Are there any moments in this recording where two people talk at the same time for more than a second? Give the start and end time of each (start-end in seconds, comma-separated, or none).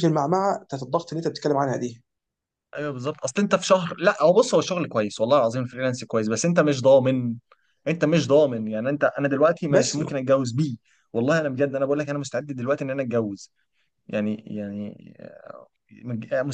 none